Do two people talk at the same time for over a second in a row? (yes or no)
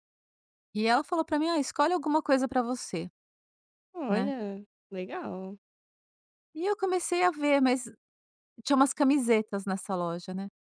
no